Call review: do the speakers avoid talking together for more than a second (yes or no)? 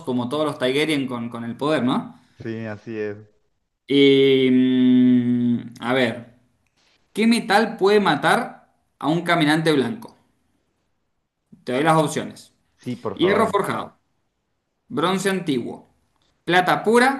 yes